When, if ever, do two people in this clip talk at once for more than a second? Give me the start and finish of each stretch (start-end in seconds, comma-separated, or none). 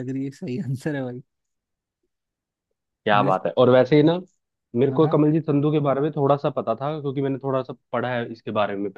none